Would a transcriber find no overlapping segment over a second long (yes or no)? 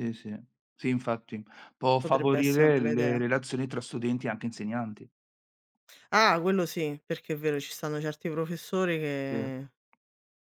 no